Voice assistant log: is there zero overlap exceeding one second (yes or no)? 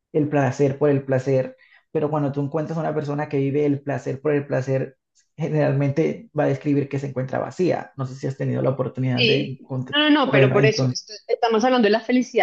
no